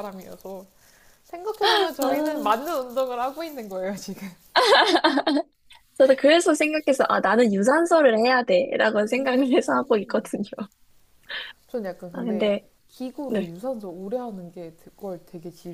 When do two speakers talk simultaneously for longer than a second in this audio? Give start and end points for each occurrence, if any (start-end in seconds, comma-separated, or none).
9.0-10.3